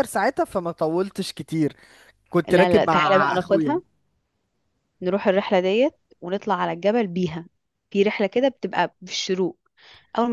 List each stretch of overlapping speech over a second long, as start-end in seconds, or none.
2.5-3.8